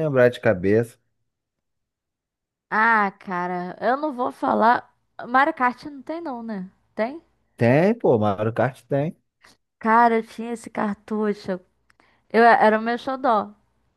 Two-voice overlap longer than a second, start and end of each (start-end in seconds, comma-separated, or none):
none